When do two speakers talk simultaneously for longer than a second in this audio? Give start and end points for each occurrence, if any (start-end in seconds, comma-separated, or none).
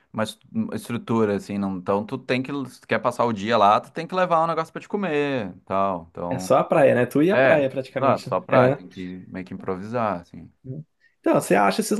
7.3-8.8